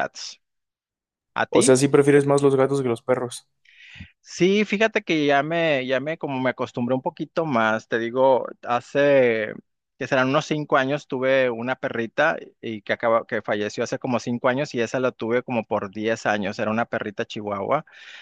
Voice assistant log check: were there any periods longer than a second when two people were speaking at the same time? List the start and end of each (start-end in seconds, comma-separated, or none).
none